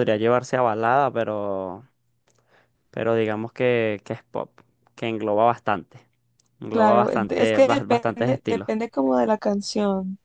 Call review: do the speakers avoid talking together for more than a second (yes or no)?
no